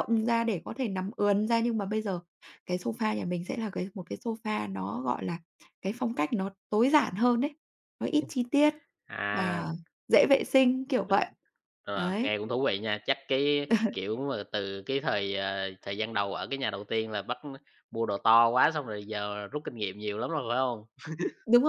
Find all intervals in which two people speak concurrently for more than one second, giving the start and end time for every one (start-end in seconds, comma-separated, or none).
none